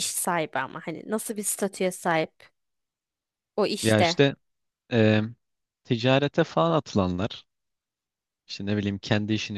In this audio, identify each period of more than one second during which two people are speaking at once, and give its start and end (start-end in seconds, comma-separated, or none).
none